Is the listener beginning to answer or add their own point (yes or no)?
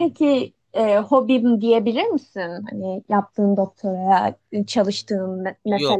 yes